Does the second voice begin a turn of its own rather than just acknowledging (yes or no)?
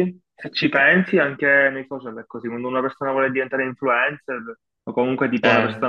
no